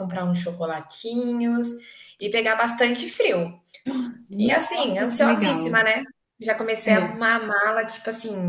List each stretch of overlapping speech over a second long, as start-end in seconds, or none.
4.4-5.8